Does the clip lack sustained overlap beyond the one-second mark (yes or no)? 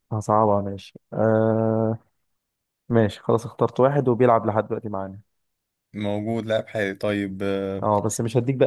yes